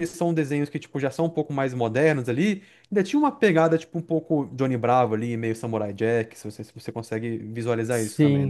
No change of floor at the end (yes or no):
no